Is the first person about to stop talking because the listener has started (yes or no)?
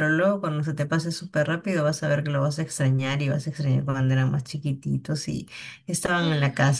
no